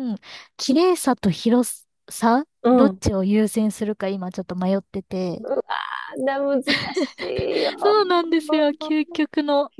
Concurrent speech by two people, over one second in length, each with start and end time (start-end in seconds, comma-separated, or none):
none